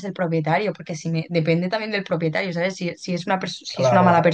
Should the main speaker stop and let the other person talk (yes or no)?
no